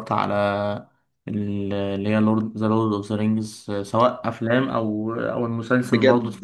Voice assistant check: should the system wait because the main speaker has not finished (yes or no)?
no